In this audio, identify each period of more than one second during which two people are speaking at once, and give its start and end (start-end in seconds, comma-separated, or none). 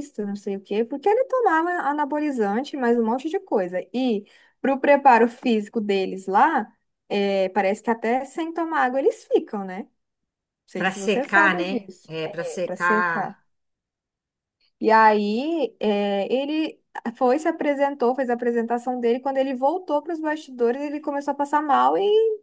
10.8-13.3